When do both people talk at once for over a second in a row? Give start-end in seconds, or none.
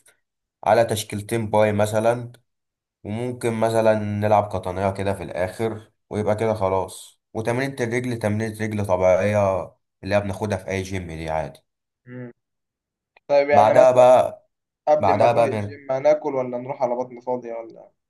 none